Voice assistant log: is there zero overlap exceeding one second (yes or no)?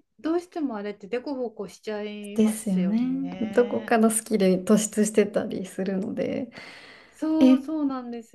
no